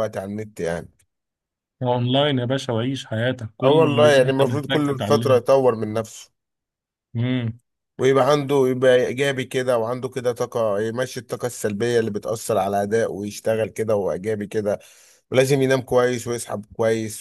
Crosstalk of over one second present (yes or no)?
yes